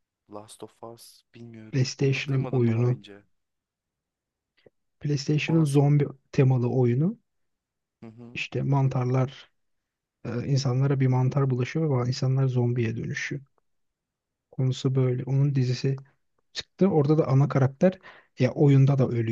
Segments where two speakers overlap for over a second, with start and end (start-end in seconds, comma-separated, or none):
1.7-3.0